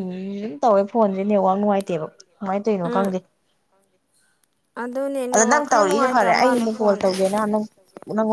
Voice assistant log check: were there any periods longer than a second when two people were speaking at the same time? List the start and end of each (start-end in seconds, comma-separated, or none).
5.3-7.0